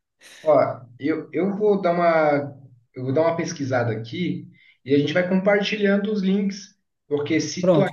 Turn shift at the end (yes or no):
no